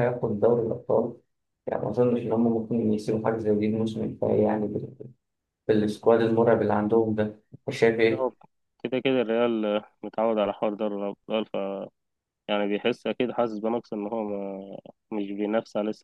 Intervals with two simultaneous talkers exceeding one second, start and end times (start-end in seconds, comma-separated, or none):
none